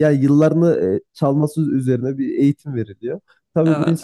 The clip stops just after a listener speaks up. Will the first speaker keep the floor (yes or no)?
yes